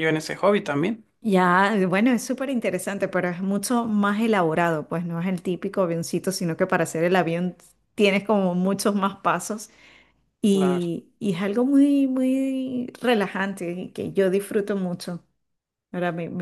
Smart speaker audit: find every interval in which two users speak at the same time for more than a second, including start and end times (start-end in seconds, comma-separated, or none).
none